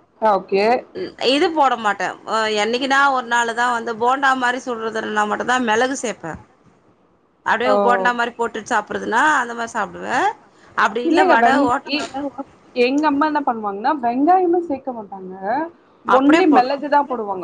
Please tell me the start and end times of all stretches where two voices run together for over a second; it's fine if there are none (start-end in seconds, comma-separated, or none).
none